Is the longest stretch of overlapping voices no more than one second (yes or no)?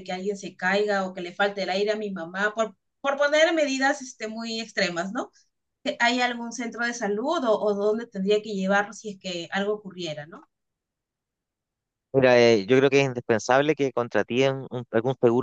yes